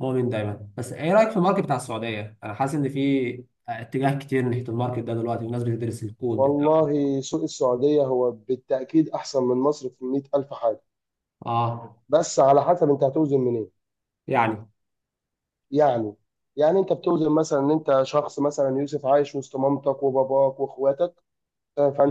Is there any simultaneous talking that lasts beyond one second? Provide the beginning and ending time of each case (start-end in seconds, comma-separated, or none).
none